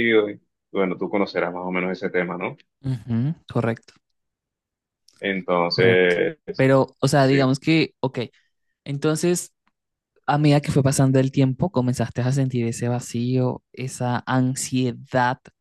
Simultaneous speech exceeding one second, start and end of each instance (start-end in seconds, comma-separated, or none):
none